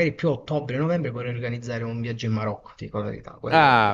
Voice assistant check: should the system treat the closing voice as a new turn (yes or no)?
yes